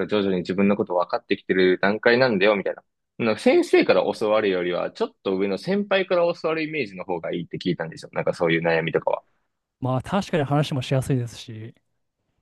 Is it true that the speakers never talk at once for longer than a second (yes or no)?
yes